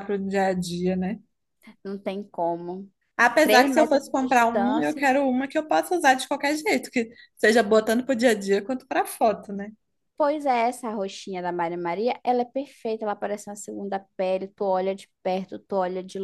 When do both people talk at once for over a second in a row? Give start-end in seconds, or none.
3.4-5.0